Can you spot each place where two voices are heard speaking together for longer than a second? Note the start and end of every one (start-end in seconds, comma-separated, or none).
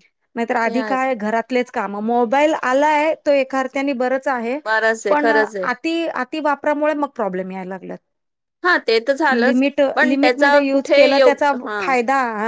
9.4-11.8